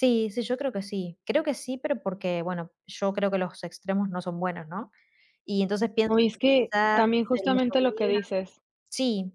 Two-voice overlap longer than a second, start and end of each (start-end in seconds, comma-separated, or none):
6.1-8.2